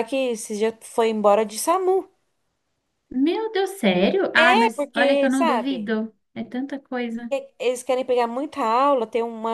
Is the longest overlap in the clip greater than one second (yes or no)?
yes